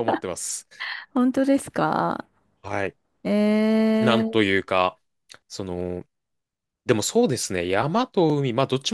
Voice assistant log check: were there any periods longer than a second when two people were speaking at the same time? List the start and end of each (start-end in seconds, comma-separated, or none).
none